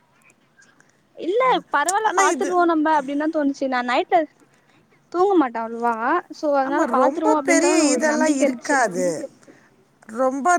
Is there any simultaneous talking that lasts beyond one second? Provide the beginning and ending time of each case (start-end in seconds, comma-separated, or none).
6.7-8.8